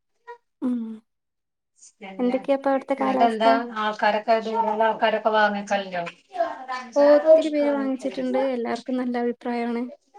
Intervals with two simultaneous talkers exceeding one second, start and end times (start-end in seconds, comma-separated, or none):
2.2-3.5